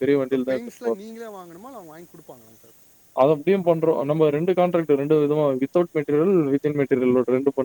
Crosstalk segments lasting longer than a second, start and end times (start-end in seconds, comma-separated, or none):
none